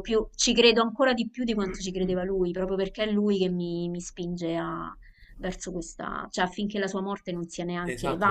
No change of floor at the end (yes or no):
no